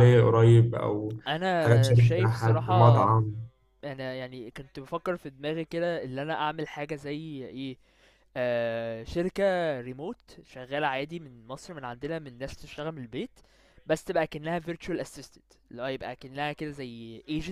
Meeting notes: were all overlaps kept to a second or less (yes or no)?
no